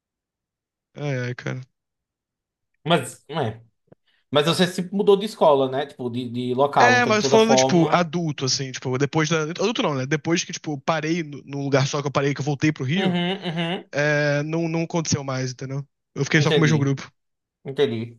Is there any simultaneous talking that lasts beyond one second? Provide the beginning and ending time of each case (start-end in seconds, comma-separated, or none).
6.8-8.1